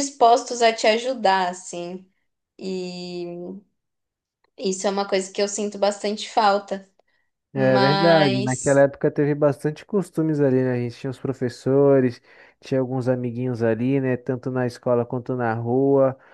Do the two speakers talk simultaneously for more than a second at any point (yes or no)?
yes